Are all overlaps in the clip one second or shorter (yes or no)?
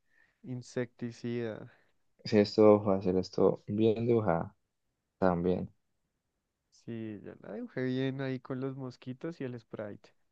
yes